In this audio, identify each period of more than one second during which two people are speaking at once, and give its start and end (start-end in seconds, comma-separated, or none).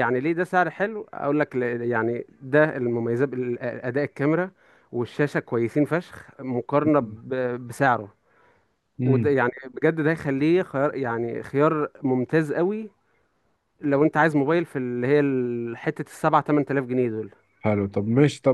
none